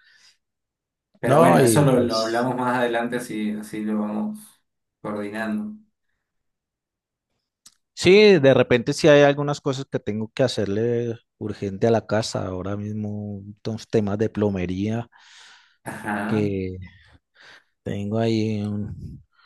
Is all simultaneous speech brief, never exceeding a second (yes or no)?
no